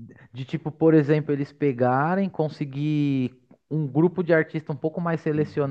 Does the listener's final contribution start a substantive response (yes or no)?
no